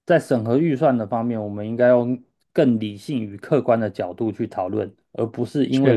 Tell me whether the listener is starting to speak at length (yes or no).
no